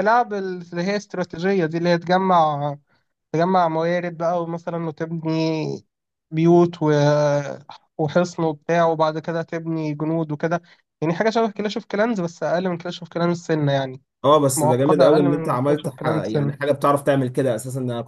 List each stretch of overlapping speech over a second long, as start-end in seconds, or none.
14.6-16.5